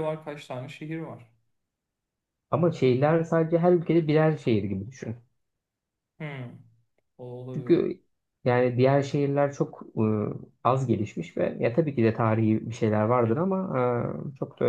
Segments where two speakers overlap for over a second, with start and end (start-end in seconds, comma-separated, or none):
none